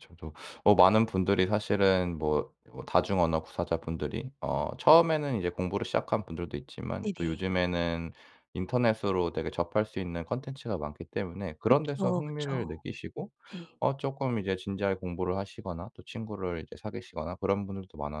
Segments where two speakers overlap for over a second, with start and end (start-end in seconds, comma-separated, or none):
11.6-12.8